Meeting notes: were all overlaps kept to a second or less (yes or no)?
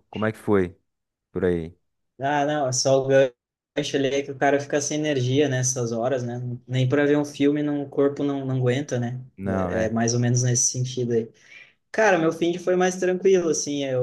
yes